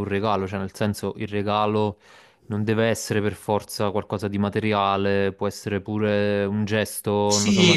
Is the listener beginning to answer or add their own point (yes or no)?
yes